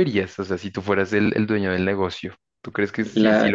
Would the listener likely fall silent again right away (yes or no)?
yes